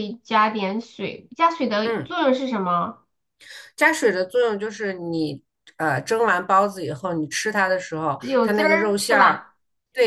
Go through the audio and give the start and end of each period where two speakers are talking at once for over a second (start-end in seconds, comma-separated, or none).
8.2-9.4